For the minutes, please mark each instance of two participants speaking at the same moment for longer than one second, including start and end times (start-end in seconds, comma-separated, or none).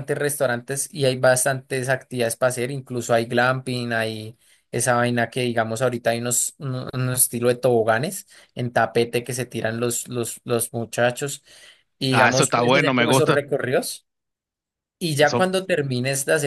12.1-13.4